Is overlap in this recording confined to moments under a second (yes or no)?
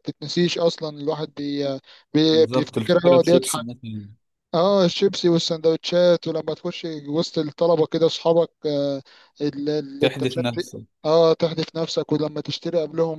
no